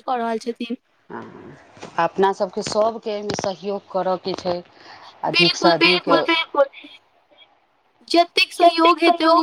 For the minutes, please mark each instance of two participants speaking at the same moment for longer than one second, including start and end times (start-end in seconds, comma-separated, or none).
5.3-6.7